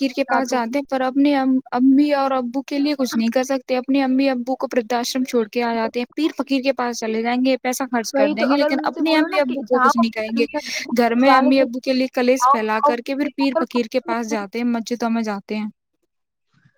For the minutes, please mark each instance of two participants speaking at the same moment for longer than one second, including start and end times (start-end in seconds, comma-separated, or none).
8.2-10.4